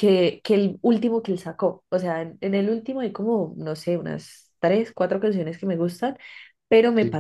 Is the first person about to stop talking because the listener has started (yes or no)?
no